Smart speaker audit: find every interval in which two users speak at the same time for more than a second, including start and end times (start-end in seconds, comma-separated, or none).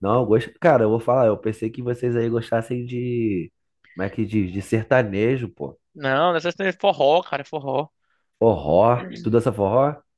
none